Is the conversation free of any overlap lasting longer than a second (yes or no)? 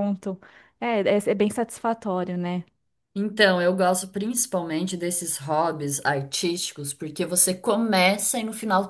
yes